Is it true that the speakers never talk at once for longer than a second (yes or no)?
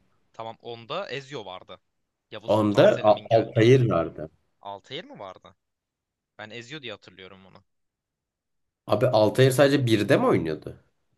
no